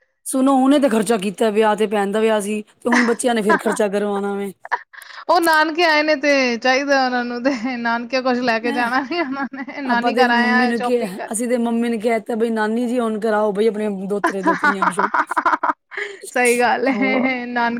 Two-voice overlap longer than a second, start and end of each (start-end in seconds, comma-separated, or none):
9.9-11.3